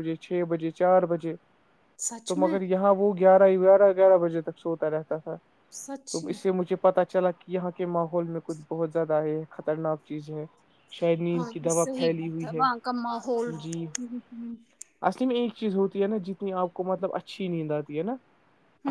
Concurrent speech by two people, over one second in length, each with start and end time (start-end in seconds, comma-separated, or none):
none